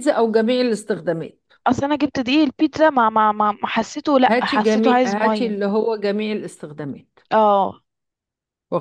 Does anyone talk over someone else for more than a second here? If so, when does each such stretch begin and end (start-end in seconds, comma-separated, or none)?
4.3-5.5